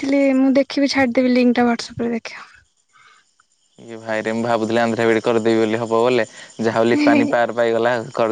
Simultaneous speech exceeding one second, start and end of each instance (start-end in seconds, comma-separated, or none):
none